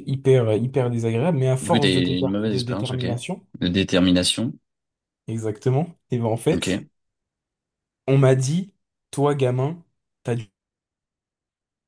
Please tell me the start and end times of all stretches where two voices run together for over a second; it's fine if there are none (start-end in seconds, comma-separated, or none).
1.6-3.0